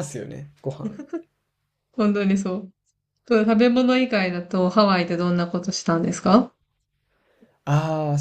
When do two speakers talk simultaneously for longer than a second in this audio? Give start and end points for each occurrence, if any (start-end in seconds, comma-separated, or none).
none